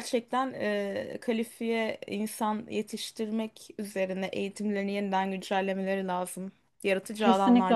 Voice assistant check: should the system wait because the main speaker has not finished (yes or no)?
no